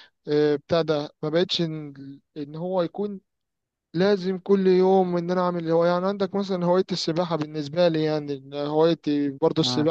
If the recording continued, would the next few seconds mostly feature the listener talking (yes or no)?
no